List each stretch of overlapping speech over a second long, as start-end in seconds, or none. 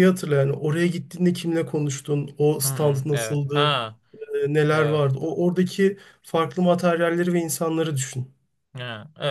2.6-3.8